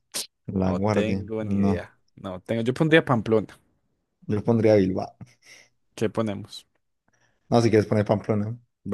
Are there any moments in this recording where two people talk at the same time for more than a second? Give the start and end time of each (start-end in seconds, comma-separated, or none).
0.6-1.9